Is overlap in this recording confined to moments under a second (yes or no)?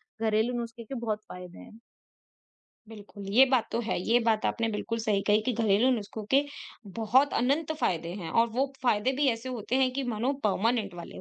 yes